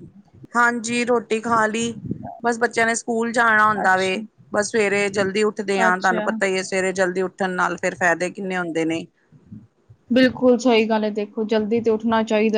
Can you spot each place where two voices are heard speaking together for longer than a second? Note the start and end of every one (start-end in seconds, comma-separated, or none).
none